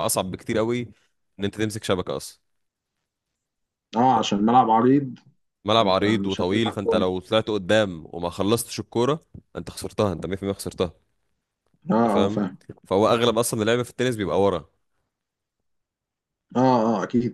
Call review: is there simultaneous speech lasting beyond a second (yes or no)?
yes